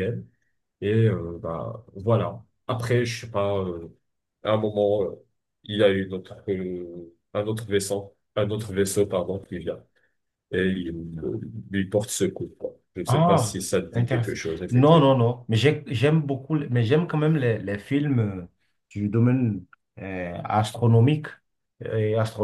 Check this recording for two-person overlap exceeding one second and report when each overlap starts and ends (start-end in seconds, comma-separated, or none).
13.1-15.3